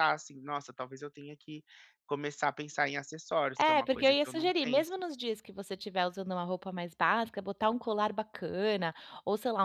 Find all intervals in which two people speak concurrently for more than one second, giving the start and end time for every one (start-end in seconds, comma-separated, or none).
3.6-4.9